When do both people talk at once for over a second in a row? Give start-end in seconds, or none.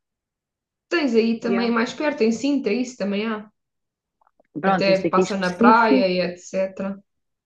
4.6-6.1